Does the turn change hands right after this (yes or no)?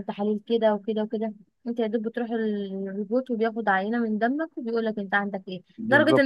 no